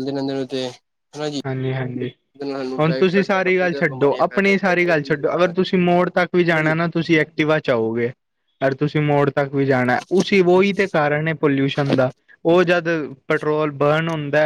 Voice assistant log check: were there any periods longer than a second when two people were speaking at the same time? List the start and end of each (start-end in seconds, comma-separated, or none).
3.3-5.5